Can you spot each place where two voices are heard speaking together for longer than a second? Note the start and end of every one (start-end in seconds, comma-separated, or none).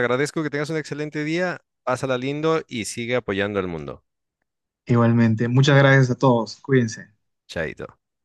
none